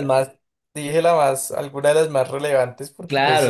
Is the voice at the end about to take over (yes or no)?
yes